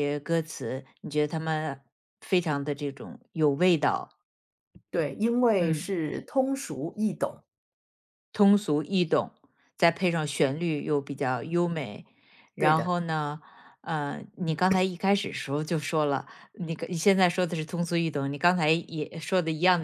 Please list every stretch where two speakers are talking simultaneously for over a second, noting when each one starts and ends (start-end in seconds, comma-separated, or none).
none